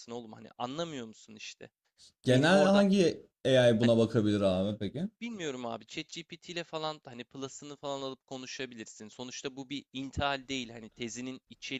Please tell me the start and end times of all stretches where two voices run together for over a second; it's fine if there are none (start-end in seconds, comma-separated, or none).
none